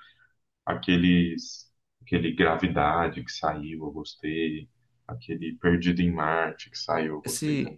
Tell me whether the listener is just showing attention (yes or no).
no